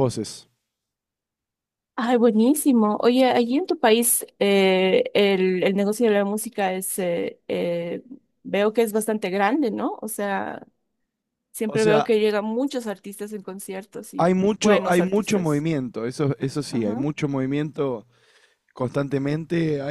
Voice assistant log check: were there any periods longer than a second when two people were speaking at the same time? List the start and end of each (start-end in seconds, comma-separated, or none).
14.2-15.7